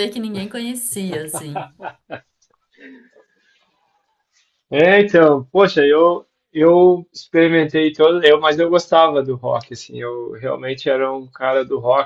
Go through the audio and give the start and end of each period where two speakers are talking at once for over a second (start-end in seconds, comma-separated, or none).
none